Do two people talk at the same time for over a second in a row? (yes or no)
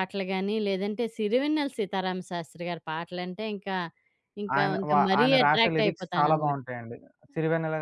yes